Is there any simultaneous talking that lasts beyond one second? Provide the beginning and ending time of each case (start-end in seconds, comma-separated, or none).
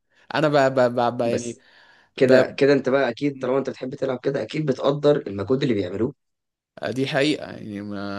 none